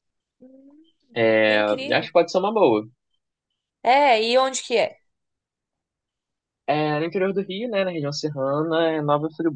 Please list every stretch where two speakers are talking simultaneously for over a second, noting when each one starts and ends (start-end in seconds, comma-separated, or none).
none